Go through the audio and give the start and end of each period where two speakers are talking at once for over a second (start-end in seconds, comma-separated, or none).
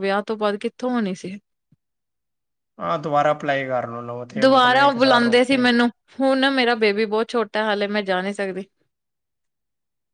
4.4-5.7